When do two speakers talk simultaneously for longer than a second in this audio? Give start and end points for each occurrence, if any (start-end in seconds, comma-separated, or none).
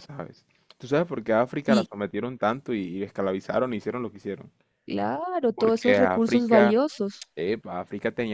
5.5-6.8